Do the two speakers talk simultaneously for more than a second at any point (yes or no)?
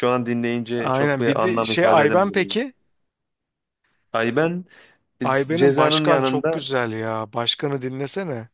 yes